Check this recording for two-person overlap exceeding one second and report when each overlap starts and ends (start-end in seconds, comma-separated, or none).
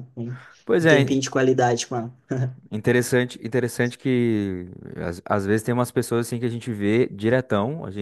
none